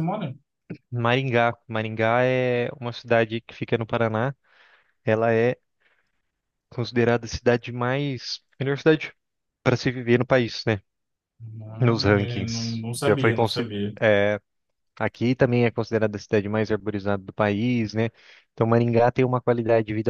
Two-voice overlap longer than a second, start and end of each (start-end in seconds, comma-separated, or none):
11.8-13.9